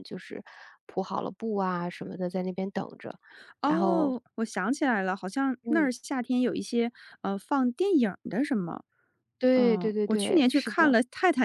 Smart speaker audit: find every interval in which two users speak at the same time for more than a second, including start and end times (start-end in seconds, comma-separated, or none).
9.6-10.9